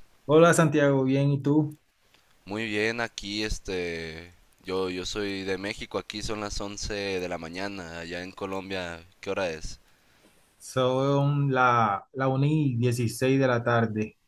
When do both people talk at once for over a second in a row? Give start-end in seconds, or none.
none